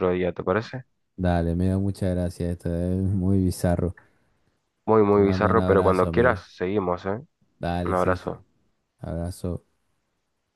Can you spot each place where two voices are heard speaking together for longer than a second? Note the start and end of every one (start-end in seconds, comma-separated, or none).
5.1-6.4